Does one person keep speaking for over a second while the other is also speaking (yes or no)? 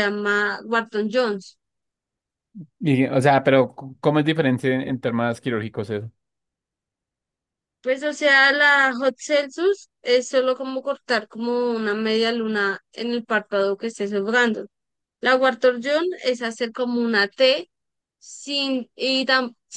no